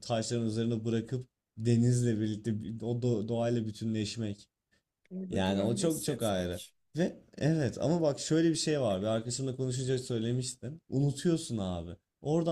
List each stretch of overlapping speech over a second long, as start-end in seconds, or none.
5.3-6.6